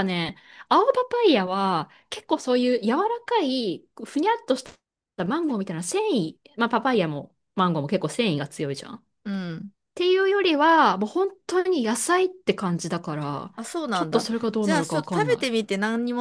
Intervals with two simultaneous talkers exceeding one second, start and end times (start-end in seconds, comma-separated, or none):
13.9-15.5